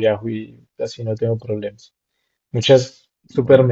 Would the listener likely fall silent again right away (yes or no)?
yes